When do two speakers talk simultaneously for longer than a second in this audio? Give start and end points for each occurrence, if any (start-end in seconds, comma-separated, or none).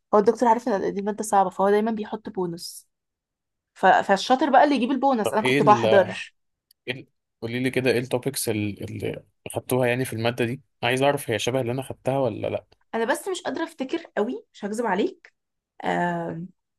none